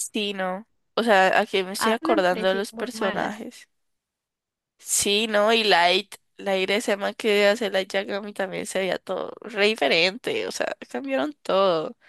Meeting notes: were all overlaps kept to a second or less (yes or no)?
no